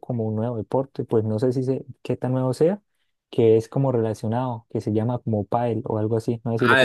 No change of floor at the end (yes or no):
no